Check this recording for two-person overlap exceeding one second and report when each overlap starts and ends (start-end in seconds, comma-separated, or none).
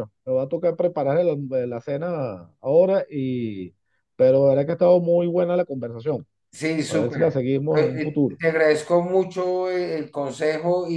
6.9-8.4